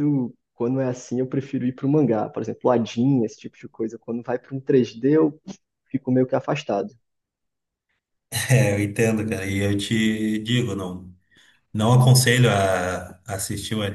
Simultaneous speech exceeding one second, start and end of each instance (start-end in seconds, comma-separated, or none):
none